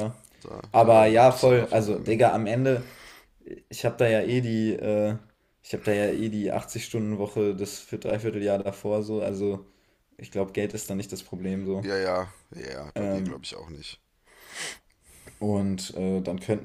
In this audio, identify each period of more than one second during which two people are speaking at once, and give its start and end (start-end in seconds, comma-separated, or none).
0.7-2.2